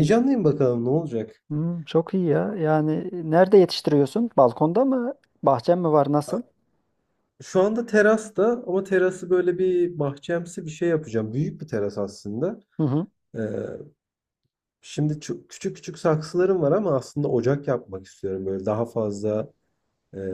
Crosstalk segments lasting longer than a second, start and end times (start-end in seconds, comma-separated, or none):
none